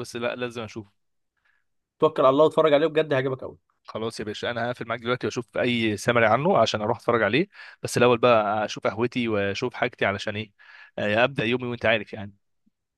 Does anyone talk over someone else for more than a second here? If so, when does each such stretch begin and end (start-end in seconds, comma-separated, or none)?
none